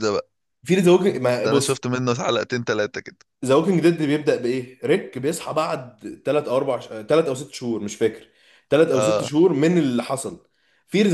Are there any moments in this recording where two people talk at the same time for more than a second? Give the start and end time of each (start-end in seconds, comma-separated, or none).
none